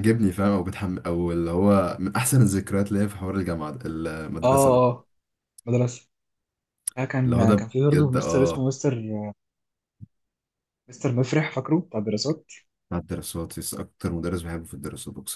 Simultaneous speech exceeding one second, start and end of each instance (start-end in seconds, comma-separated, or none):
7.2-8.7